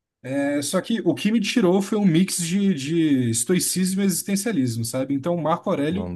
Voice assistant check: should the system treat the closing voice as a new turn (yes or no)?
no